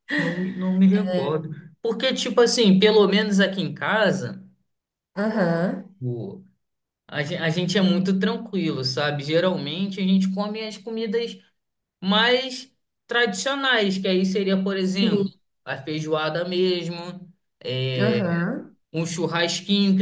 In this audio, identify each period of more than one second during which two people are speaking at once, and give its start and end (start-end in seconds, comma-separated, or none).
none